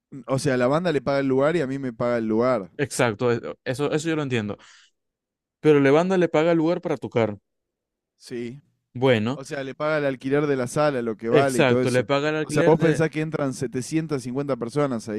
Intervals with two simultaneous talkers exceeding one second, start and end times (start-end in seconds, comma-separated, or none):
11.3-13.0